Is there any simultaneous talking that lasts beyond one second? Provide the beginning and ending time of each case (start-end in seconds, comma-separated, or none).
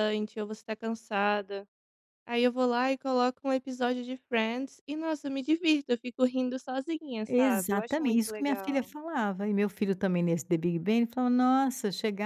7.3-8.9